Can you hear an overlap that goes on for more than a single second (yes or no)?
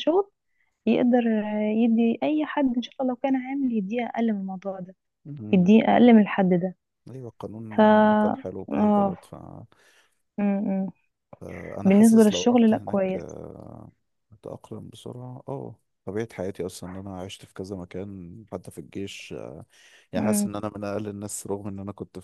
yes